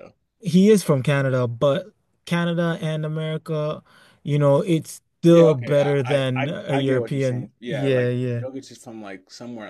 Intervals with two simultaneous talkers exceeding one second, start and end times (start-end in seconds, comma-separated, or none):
5.3-8.4